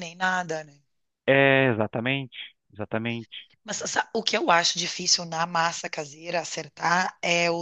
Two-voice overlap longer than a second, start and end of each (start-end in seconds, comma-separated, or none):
none